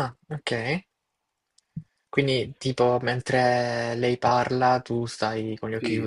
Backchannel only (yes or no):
no